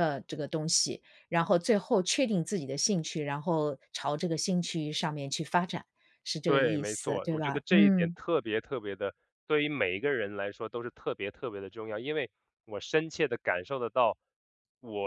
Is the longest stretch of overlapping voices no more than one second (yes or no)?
no